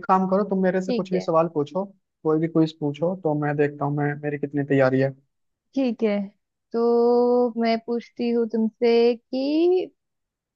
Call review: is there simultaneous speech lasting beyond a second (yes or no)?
no